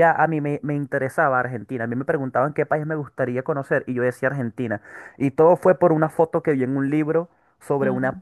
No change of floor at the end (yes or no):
yes